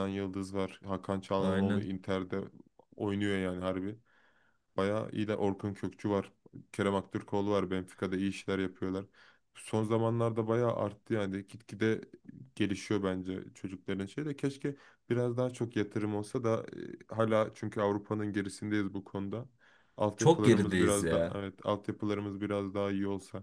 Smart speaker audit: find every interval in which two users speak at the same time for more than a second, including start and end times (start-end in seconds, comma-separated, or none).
20.2-21.4